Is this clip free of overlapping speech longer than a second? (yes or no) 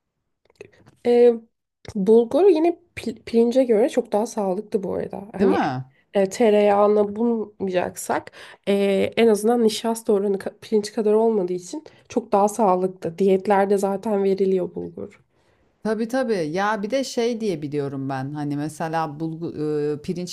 yes